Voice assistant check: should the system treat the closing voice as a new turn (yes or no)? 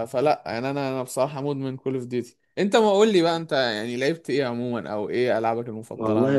yes